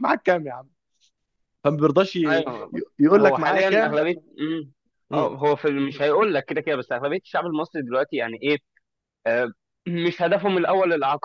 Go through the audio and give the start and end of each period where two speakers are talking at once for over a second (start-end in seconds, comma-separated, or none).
2.2-4.0